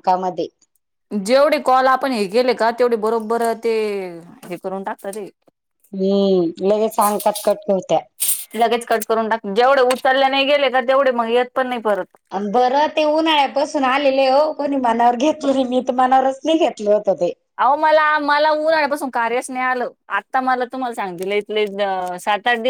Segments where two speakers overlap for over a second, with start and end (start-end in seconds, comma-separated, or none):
none